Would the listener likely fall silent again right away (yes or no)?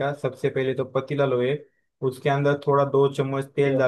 yes